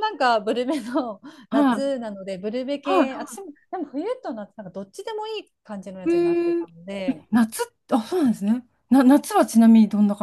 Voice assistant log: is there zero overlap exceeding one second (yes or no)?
yes